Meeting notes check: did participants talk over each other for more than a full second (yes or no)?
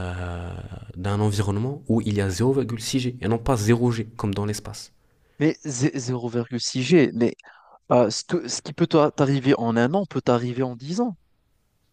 no